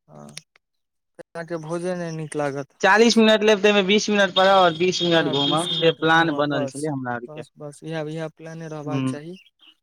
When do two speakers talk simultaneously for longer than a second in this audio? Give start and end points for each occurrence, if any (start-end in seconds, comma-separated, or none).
none